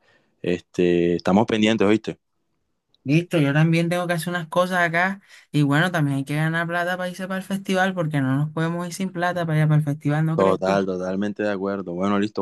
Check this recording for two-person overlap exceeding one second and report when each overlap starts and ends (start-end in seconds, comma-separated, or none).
none